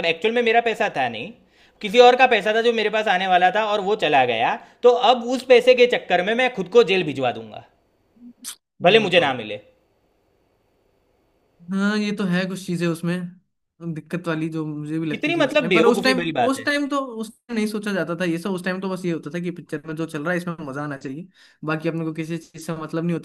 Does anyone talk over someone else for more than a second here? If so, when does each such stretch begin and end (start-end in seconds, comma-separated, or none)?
15.1-16.7